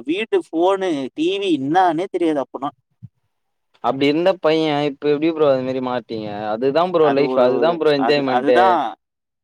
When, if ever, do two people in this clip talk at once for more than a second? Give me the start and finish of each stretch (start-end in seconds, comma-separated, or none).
none